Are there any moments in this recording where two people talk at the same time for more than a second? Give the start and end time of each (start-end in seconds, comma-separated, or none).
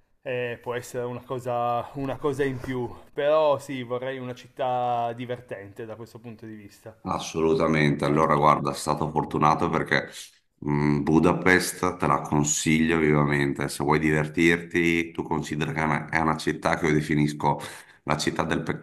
none